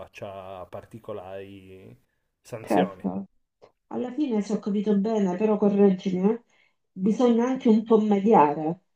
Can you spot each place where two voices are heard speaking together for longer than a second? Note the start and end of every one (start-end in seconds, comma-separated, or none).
none